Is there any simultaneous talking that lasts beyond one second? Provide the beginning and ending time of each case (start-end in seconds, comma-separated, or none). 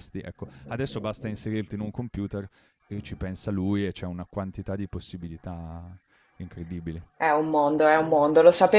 none